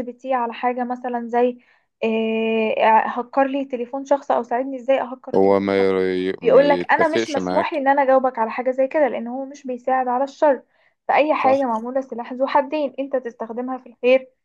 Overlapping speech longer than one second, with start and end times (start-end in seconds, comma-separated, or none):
6.4-7.8